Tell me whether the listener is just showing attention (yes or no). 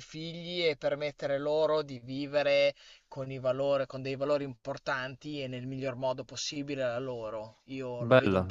no